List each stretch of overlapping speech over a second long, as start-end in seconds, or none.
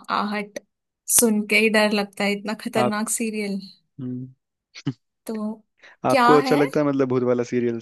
none